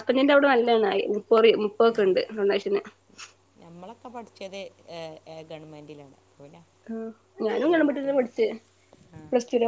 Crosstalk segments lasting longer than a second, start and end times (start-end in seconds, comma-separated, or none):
none